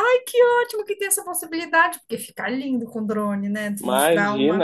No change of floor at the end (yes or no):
no